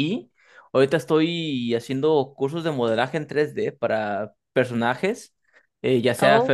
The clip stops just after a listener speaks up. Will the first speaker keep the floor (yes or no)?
yes